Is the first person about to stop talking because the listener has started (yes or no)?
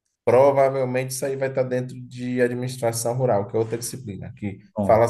no